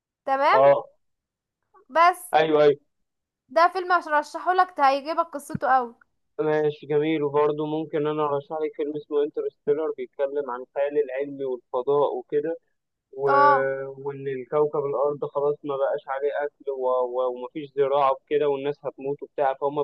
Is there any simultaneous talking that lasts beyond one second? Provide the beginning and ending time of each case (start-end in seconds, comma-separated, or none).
none